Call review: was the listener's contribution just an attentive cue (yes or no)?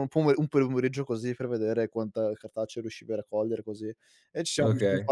yes